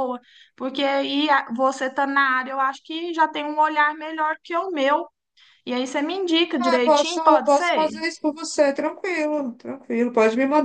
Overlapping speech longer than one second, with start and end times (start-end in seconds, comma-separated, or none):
6.6-7.9